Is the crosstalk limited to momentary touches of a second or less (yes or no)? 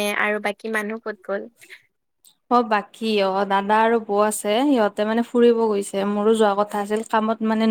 yes